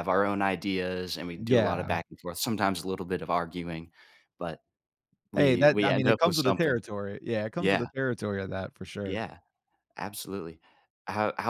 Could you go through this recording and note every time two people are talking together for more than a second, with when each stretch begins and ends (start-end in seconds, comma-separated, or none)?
5.3-6.8